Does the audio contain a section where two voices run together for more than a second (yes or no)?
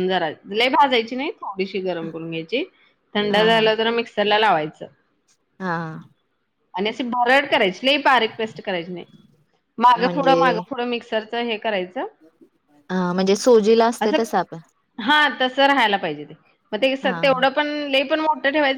no